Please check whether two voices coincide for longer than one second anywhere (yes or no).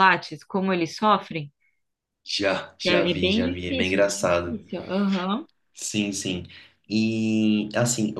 yes